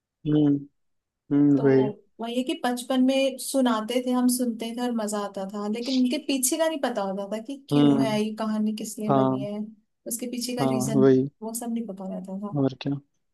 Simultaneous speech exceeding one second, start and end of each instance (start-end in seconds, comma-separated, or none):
none